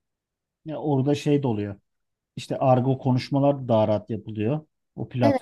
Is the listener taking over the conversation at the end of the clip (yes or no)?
no